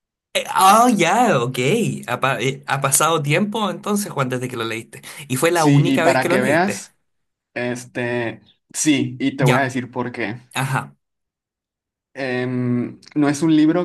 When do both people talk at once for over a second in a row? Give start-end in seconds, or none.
5.5-6.8